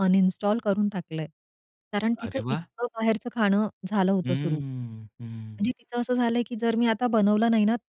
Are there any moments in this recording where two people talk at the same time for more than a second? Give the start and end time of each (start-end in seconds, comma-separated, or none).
4.2-5.6